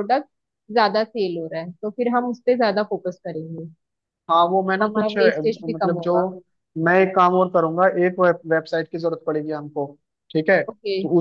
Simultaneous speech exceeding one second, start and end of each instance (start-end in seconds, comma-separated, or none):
4.4-6.1